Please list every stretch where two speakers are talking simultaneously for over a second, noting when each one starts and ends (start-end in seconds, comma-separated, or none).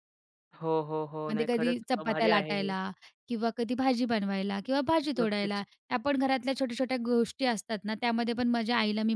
1.3-2.7